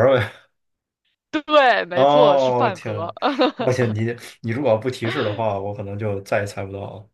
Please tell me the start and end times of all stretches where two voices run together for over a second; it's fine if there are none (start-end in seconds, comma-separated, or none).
1.9-3.1